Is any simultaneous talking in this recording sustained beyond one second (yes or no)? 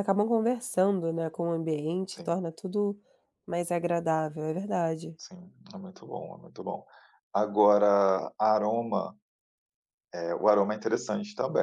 no